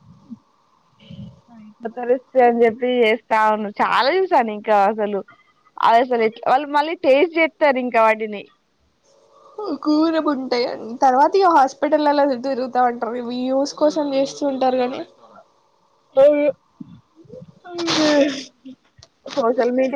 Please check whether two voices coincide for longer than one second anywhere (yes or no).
no